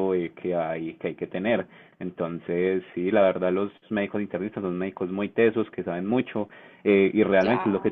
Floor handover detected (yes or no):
no